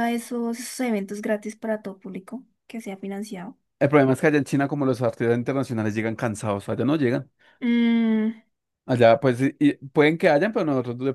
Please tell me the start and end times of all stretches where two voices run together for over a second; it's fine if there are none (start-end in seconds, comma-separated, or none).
none